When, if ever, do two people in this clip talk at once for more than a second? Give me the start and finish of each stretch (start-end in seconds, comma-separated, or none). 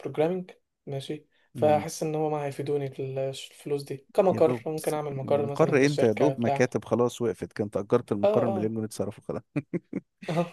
4.3-6.7